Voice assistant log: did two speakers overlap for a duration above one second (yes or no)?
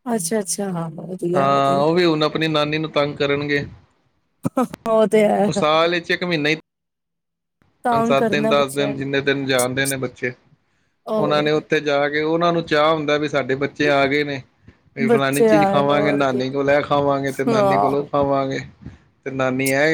yes